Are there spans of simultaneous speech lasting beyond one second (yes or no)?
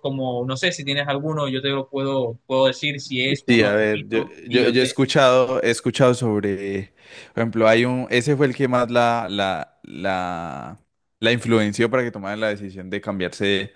yes